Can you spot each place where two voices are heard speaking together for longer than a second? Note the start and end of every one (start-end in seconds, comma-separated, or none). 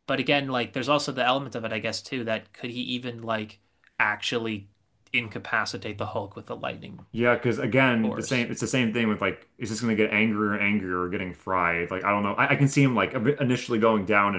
none